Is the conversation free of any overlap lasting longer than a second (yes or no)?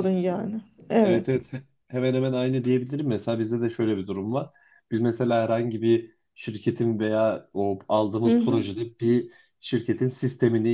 yes